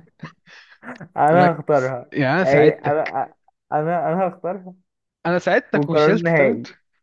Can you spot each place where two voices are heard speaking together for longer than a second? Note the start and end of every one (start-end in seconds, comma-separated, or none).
1.3-3.2